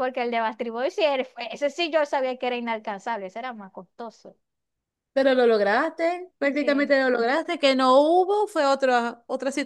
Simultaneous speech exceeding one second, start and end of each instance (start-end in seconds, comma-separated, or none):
none